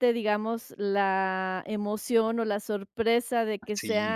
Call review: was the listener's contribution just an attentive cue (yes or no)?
yes